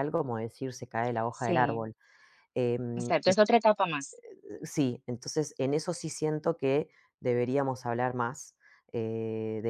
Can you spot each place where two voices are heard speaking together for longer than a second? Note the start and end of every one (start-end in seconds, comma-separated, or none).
none